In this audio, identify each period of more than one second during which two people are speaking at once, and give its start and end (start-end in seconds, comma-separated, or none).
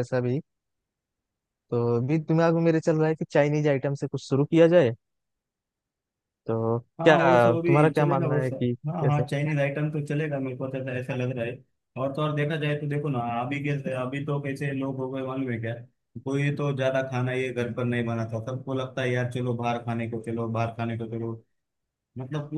7.0-9.2